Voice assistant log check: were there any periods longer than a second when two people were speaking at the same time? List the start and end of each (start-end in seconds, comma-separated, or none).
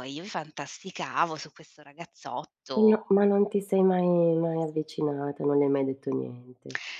none